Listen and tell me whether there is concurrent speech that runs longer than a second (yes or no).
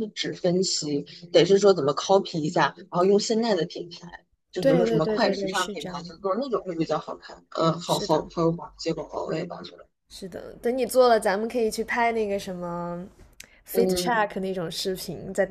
yes